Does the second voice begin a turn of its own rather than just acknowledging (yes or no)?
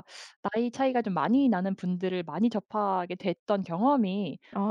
no